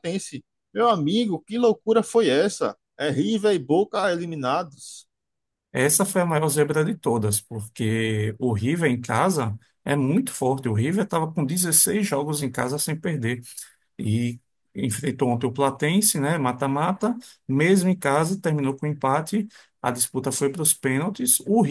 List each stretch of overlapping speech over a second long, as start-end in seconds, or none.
none